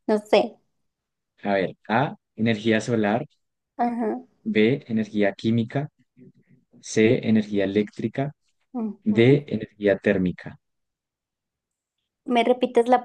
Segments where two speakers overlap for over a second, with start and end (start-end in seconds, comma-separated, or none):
none